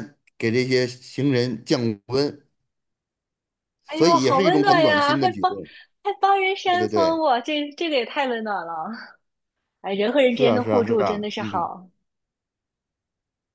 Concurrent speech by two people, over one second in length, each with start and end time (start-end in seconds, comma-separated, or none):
3.9-5.5, 10.3-11.7